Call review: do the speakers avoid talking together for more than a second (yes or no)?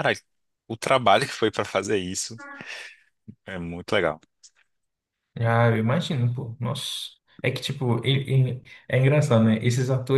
yes